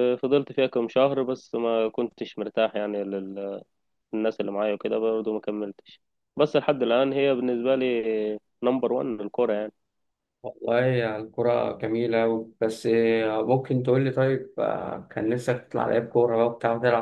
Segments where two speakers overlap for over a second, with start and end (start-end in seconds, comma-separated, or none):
none